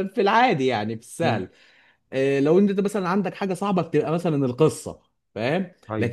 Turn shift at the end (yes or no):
no